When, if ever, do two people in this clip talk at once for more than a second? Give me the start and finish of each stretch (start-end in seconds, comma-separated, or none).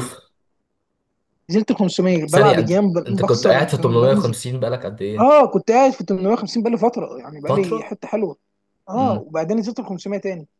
2.3-4.3